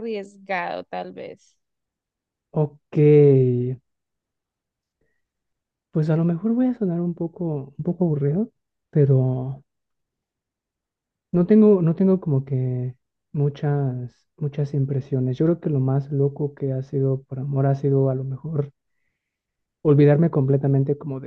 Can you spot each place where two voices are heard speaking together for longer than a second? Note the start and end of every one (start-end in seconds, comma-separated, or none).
none